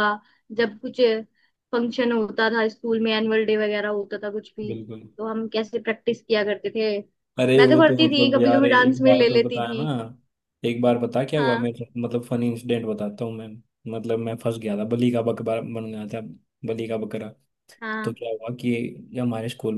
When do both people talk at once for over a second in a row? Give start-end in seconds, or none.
7.6-9.8